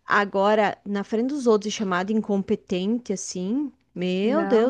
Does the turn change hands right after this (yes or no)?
yes